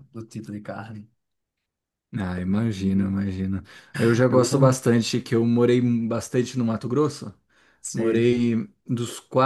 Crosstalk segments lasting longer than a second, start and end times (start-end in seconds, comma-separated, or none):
none